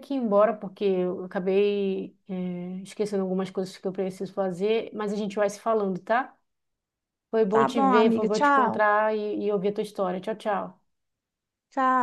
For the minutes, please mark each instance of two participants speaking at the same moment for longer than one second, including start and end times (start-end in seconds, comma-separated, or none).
7.5-8.8